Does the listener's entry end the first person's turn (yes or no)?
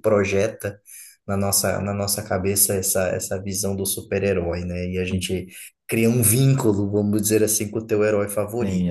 yes